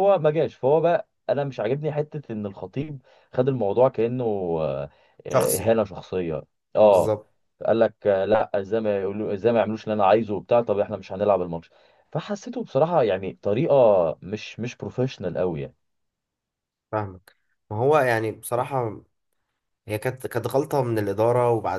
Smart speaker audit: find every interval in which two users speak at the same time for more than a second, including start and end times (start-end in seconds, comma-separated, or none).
none